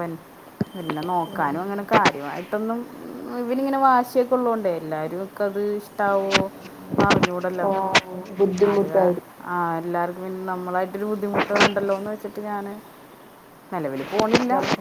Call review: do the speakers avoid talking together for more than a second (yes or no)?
yes